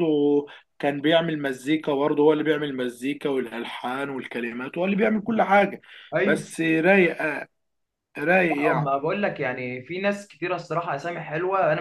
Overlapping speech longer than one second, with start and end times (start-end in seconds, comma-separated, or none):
none